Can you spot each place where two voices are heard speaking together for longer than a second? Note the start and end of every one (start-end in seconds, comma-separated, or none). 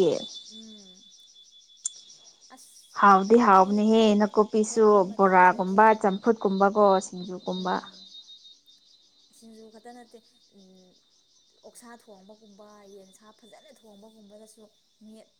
3.3-5.8